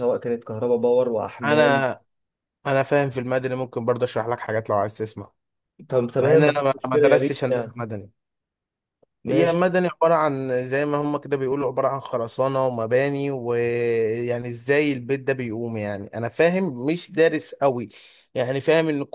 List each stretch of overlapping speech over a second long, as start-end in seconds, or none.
6.2-7.8